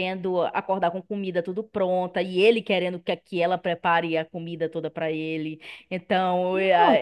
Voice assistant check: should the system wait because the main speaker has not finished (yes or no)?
no